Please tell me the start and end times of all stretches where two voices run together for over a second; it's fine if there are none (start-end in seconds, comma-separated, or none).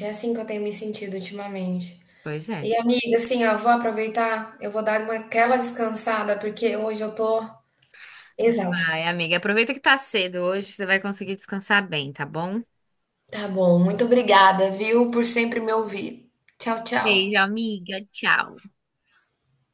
none